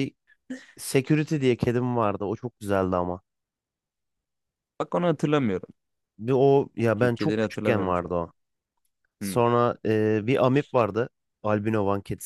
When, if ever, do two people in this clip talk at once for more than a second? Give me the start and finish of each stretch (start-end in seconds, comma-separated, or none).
7.0-8.3